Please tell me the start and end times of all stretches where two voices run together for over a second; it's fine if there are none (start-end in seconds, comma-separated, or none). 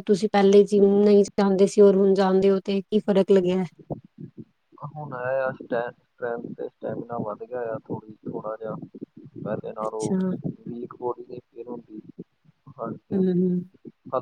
none